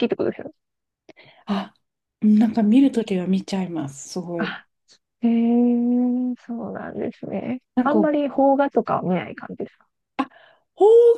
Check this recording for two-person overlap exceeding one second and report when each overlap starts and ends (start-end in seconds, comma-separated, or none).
none